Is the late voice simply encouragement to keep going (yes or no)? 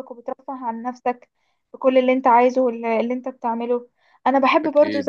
yes